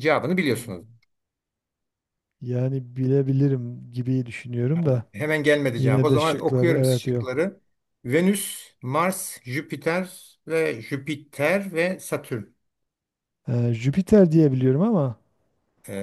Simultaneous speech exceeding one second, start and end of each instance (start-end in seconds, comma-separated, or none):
5.8-7.4